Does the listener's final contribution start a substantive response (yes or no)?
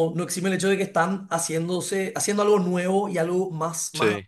no